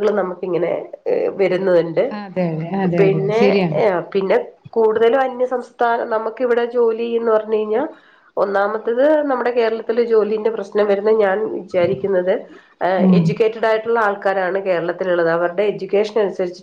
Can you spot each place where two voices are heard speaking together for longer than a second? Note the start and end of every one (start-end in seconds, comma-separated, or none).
none